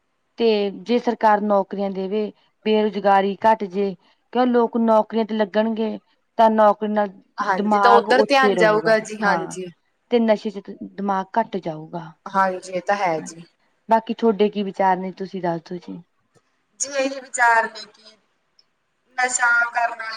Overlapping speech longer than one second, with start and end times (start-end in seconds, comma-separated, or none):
7.6-9.6